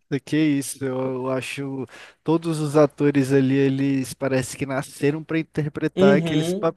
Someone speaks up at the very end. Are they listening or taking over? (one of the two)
taking over